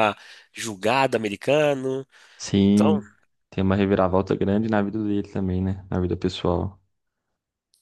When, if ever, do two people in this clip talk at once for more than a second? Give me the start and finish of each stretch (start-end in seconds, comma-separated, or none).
none